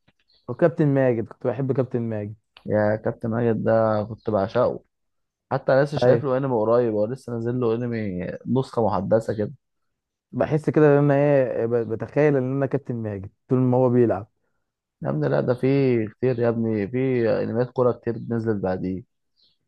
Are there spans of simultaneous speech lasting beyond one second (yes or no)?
no